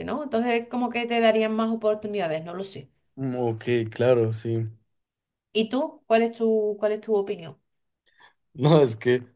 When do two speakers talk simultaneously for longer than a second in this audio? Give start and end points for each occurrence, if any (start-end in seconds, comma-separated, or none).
none